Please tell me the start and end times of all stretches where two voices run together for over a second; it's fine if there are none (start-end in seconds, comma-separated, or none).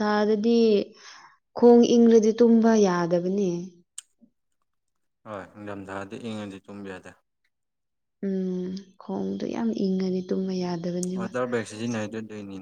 none